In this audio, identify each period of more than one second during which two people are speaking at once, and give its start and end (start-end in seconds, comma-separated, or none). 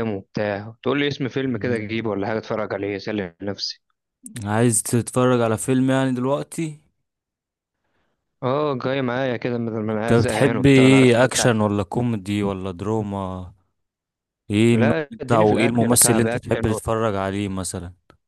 9.9-11.5, 14.7-16.8